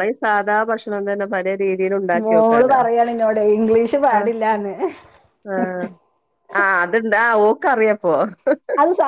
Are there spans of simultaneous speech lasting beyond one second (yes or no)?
no